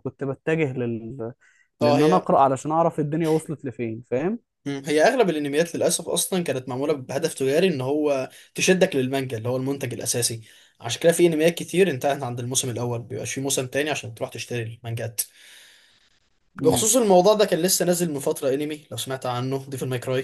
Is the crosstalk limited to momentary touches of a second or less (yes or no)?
yes